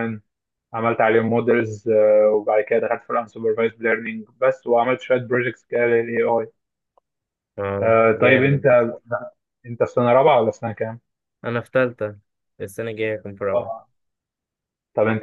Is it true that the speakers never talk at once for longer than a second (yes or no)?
yes